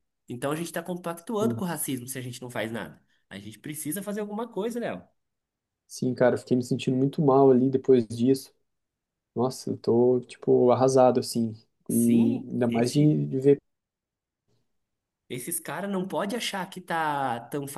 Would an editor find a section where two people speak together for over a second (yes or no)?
yes